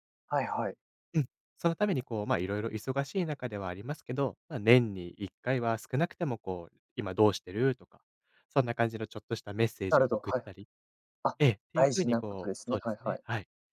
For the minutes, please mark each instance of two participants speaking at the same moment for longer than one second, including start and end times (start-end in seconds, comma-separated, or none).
11.7-13.2